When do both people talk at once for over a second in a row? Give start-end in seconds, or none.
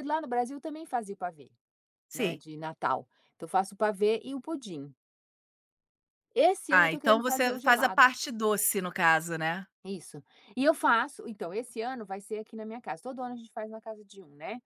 6.7-8.1